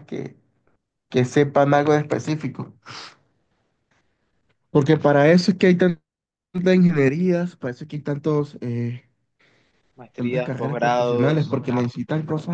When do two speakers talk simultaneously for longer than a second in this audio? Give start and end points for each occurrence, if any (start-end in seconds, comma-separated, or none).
10.1-11.6